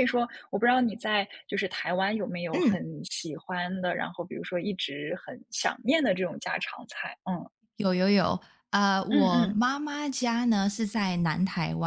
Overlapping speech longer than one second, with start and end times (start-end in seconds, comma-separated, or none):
none